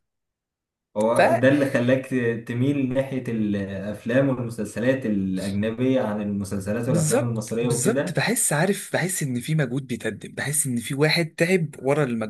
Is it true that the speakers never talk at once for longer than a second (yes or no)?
no